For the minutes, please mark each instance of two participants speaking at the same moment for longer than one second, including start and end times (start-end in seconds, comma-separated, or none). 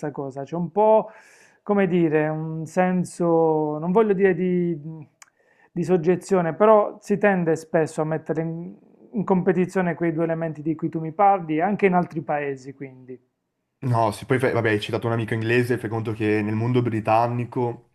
none